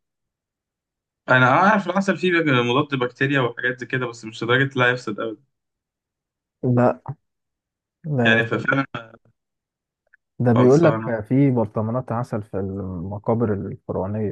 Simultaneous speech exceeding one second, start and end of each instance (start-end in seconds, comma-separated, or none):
none